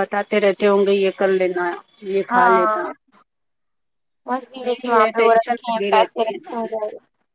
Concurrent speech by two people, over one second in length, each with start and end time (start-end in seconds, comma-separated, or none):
4.7-6.8